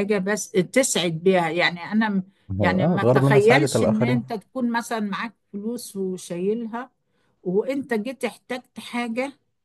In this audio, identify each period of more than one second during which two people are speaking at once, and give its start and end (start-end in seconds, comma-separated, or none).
2.6-4.3